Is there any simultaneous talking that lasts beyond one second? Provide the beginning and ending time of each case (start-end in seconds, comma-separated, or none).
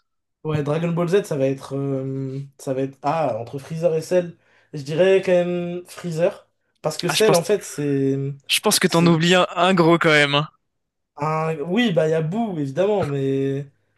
none